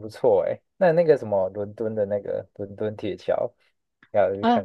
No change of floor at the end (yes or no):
no